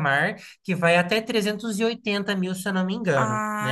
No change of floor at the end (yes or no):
no